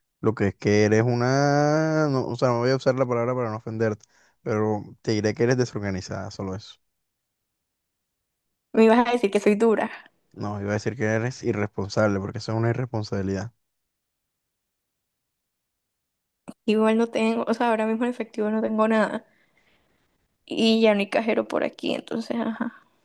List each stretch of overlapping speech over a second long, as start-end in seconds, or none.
none